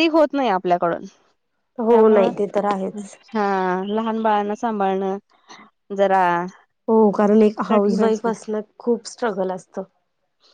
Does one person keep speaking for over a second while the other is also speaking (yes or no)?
no